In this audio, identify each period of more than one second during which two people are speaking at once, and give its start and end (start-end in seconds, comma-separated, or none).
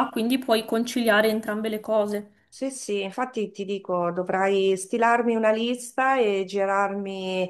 none